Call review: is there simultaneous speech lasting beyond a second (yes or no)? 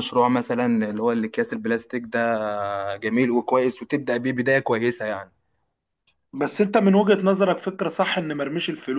no